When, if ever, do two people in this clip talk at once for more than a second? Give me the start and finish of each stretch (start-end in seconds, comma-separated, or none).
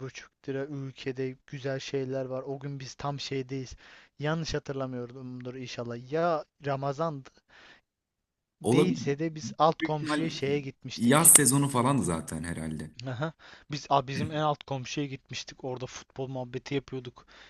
none